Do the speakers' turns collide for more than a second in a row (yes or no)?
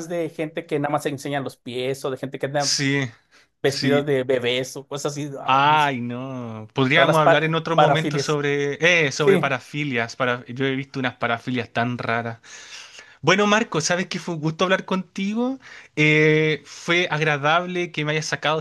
yes